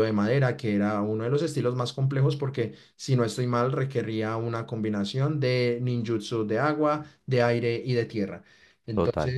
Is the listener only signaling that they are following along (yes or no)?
yes